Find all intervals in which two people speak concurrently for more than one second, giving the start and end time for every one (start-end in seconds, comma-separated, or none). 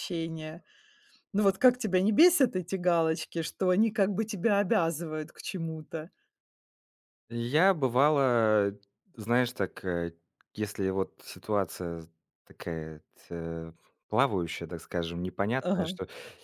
none